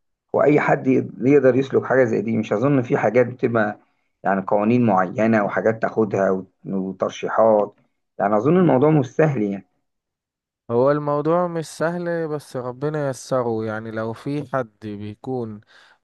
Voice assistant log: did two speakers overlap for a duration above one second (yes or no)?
no